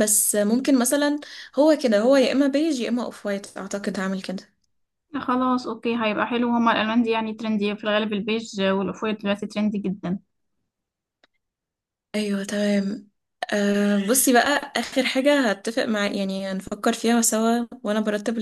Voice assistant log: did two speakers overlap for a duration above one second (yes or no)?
no